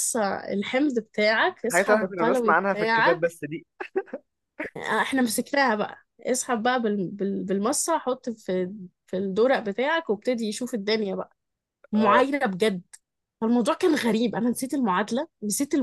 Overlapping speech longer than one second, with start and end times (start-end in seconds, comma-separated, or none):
1.6-3.3